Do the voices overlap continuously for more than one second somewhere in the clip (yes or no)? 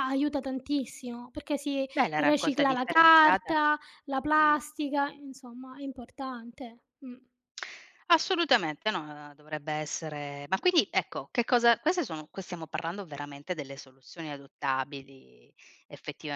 yes